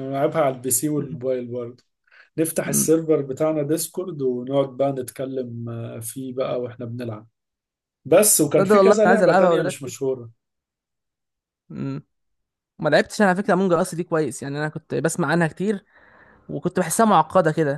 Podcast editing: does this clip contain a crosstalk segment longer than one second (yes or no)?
yes